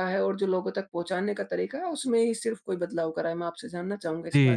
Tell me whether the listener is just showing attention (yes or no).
no